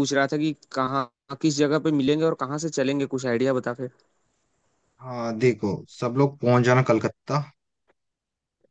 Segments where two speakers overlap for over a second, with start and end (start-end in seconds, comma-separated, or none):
none